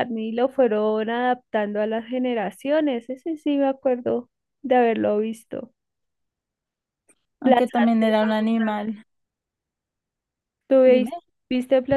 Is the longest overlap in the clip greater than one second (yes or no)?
yes